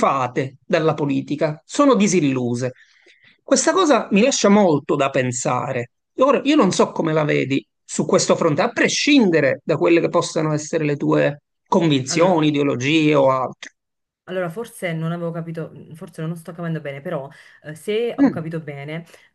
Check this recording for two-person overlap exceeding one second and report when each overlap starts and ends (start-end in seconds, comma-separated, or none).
none